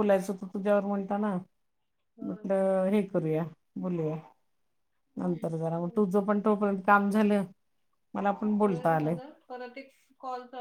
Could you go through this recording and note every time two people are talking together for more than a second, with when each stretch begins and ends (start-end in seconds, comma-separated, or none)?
none